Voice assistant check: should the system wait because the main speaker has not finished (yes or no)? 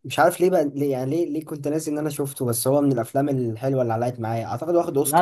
no